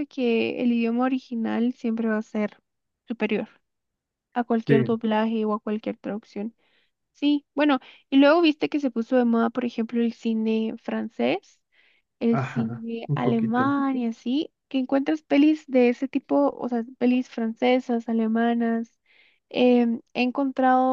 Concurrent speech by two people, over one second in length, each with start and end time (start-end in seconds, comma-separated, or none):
12.3-13.8